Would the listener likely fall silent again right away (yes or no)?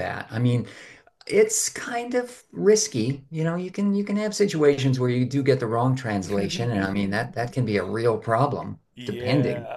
no